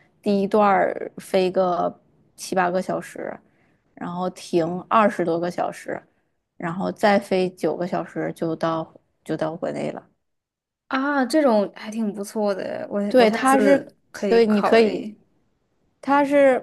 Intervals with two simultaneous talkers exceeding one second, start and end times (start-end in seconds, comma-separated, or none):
13.1-15.1